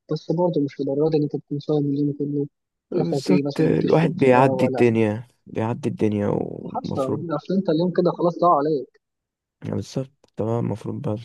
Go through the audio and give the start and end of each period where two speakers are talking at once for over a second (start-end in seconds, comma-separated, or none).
2.9-5.0